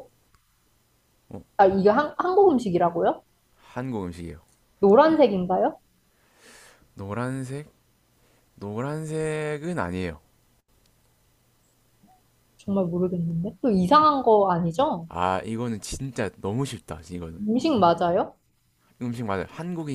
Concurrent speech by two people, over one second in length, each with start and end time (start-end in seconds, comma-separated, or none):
none